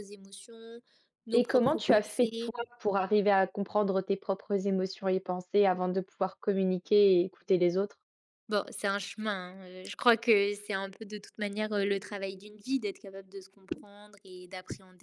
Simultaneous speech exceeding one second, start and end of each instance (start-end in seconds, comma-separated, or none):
1.3-2.5